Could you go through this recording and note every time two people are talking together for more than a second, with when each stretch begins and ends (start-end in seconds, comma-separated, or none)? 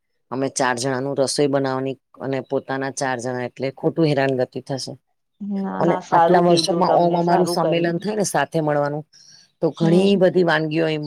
5.8-8.0